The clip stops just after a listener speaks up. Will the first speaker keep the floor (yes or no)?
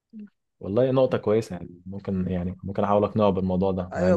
no